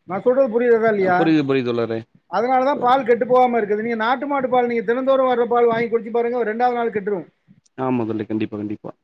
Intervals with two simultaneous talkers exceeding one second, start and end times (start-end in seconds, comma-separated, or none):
none